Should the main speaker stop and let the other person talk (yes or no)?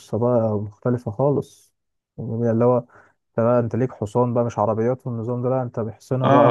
yes